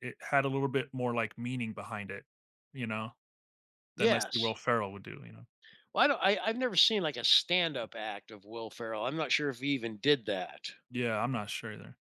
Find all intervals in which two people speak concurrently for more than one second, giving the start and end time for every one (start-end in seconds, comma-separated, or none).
none